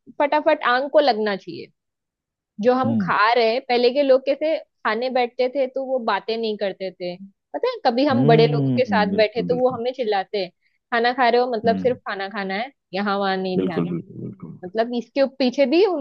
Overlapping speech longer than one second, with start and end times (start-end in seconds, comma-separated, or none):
8.1-9.8